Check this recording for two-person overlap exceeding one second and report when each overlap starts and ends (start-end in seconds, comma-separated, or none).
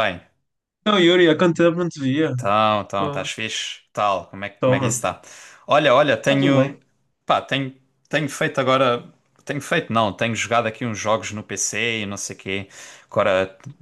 none